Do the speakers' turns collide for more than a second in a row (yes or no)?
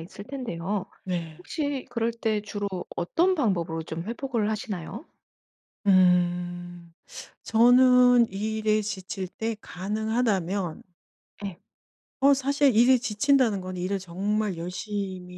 no